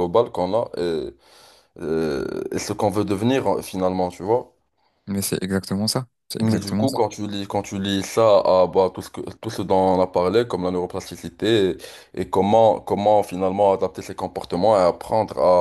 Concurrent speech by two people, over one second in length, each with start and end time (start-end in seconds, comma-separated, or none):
none